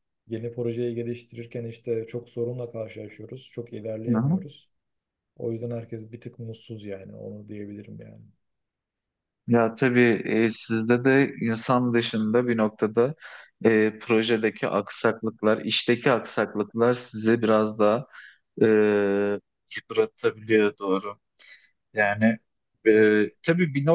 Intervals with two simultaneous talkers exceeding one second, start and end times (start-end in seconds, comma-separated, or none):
none